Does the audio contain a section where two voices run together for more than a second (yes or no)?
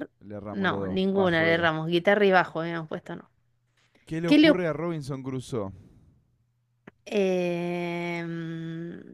yes